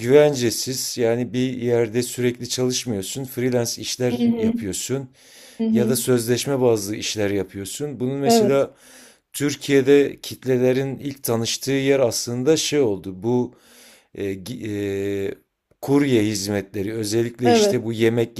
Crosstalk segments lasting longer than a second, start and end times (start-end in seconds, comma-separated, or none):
none